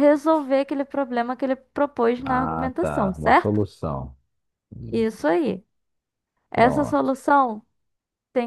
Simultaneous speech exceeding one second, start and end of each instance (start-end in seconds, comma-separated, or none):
2.2-3.6